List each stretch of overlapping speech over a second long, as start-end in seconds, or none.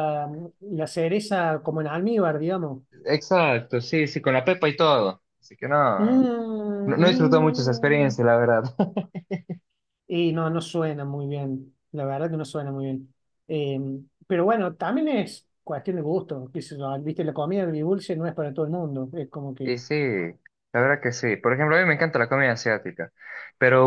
6.8-8.2